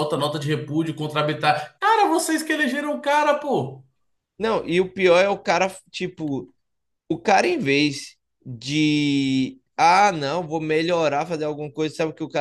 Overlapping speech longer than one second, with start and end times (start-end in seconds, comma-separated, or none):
none